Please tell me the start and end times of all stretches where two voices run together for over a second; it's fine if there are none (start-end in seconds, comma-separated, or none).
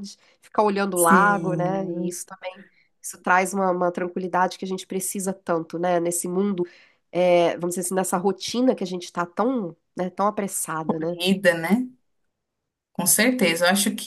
0.9-2.2